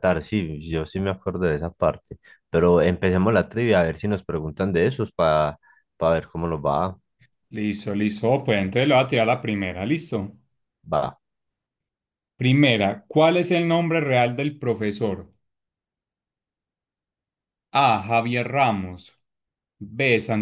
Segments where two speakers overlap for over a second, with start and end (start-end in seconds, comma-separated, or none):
none